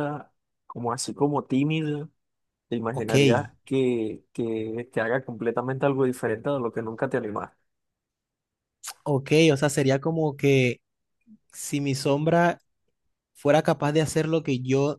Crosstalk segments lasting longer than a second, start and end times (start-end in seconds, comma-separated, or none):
none